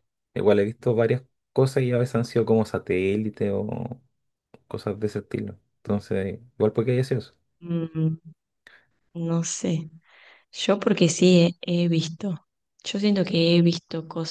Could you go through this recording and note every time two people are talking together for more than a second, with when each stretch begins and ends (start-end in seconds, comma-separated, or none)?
none